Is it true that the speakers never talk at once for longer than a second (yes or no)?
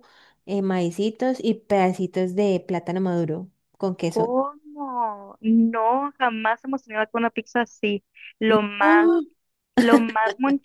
yes